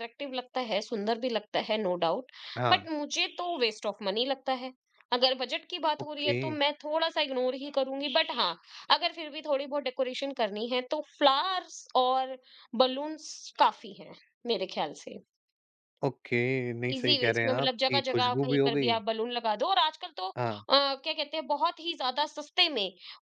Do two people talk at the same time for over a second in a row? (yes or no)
yes